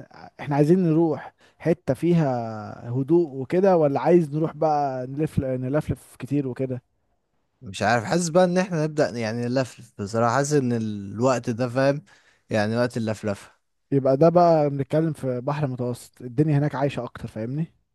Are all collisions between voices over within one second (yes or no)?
yes